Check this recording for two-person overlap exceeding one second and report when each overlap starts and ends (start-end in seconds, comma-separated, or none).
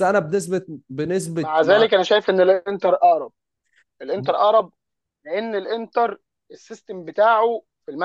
none